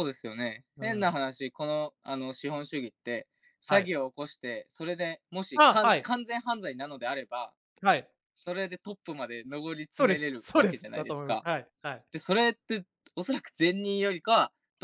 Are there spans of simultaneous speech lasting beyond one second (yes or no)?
yes